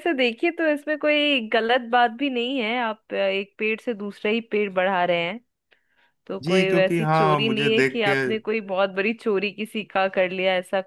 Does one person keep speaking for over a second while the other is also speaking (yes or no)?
yes